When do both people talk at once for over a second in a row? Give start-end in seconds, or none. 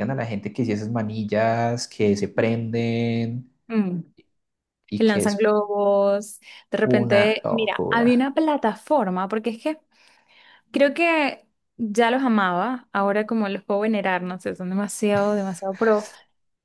6.9-8.1